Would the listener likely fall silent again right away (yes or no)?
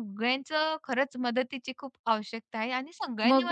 no